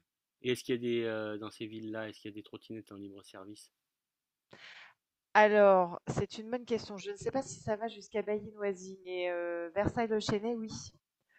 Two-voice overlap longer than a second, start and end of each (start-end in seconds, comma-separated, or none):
none